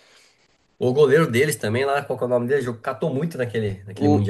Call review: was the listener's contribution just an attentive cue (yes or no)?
no